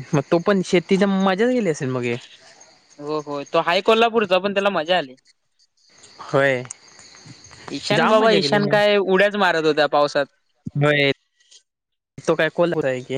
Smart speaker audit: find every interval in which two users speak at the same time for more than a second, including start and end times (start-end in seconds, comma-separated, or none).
none